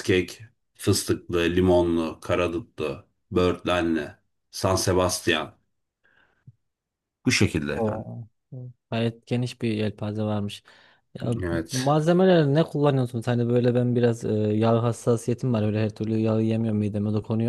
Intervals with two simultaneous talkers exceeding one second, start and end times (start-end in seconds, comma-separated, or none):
none